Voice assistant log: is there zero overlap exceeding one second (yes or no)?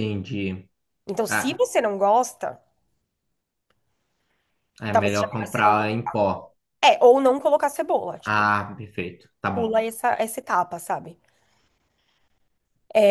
no